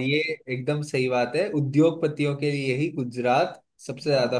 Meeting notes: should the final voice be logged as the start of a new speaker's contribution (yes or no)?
no